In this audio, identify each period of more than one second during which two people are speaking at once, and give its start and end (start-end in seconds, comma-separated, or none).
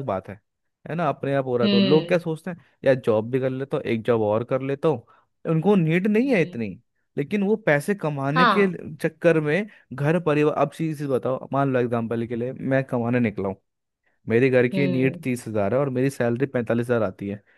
none